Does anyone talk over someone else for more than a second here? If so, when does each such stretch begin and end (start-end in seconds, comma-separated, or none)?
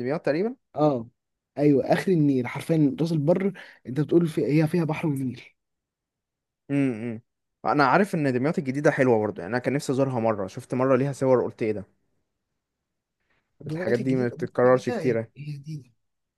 13.7-15.3